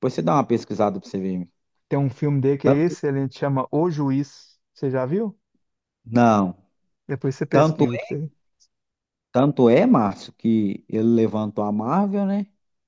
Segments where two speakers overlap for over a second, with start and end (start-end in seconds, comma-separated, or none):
none